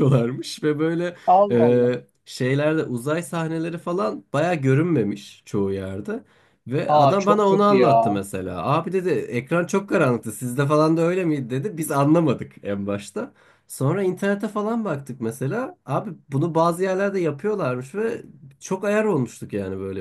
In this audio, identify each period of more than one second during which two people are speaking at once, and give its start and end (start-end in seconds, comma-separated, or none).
6.9-8.2